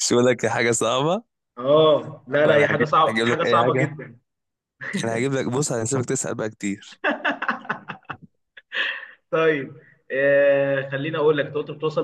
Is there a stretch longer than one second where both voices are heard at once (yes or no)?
yes